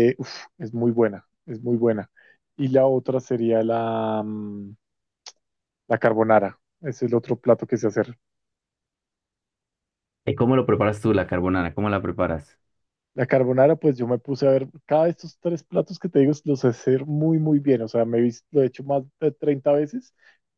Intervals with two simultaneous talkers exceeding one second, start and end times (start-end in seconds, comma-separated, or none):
none